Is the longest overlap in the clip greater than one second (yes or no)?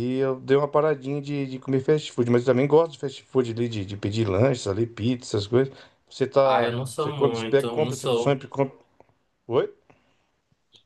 yes